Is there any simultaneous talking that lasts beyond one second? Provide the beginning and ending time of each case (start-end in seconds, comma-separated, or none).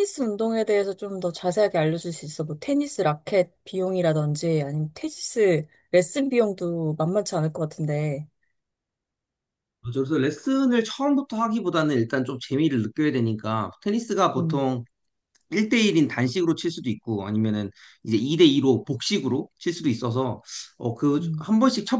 none